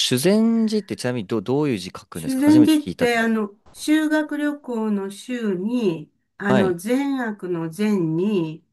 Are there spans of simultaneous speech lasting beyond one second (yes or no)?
yes